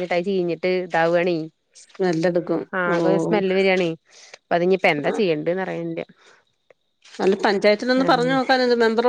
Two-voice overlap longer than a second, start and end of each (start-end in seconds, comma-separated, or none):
none